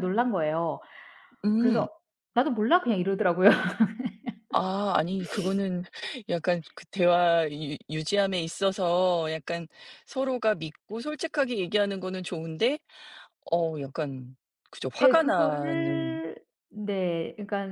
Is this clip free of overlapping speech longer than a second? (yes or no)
no